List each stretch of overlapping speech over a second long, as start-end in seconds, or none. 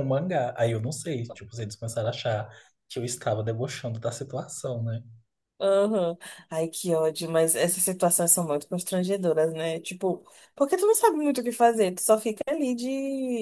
none